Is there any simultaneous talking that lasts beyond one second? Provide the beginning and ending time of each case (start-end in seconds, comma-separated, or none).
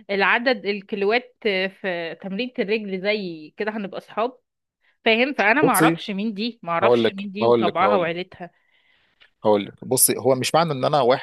6.8-8.1